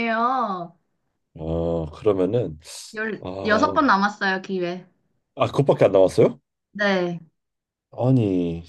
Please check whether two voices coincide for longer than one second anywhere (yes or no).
no